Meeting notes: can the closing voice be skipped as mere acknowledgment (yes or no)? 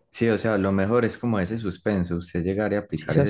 yes